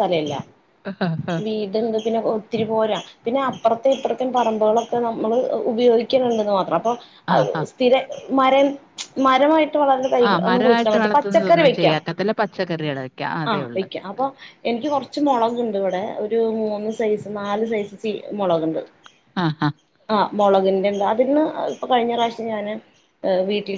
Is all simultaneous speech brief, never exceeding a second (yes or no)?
no